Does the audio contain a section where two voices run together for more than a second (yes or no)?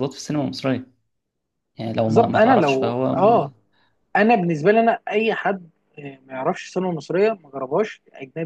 yes